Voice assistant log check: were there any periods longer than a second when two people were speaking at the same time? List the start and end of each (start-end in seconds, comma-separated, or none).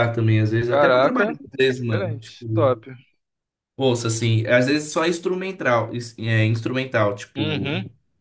0.7-2.8